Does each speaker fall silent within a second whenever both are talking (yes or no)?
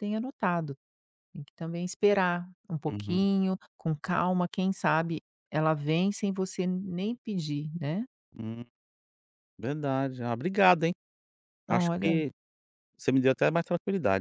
yes